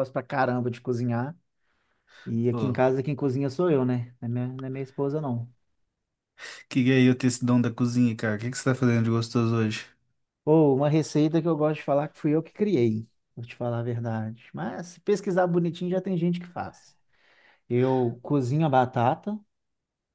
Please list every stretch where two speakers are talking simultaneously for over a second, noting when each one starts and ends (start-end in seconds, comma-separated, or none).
none